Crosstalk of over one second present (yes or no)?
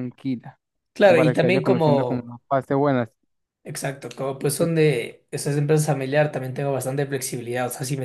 yes